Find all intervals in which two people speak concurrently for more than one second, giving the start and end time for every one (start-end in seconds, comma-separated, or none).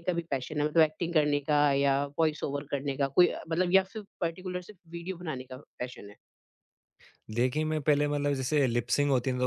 none